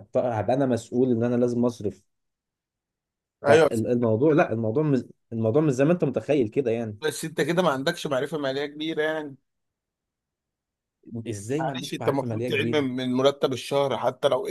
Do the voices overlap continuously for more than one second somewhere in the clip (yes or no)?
yes